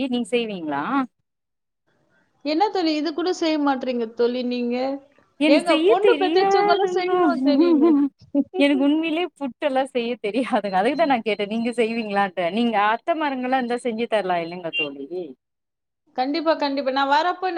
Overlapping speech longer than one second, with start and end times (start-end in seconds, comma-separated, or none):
5.5-7.2